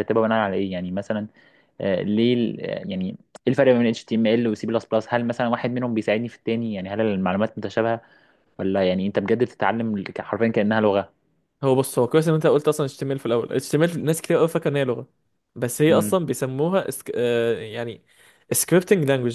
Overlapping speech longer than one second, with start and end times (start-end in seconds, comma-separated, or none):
none